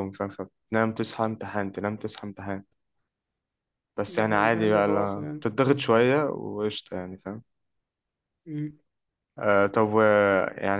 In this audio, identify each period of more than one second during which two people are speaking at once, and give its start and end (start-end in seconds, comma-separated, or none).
4.1-5.4